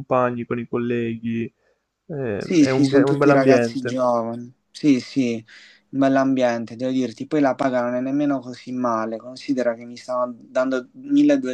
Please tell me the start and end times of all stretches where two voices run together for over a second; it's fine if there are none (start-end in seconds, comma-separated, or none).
2.4-4.0